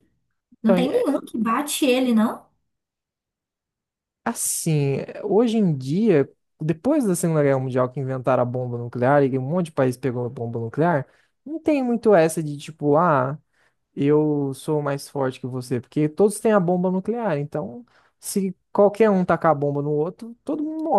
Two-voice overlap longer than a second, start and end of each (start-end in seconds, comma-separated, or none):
none